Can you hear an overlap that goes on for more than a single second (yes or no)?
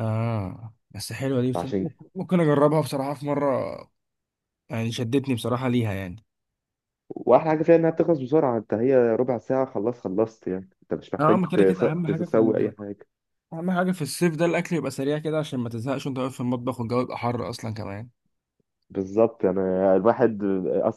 yes